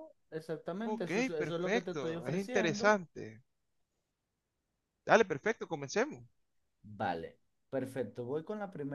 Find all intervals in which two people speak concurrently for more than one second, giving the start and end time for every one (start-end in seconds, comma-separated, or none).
0.8-3.0